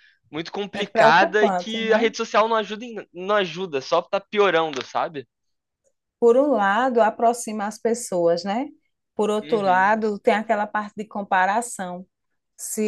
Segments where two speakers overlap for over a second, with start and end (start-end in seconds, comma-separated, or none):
0.7-2.1